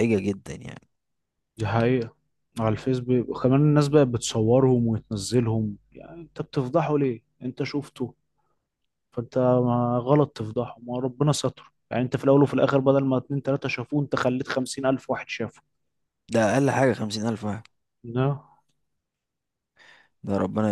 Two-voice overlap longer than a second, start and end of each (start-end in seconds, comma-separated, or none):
none